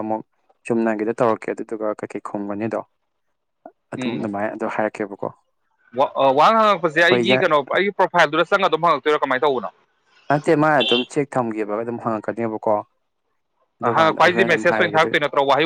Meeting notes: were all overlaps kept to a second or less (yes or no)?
no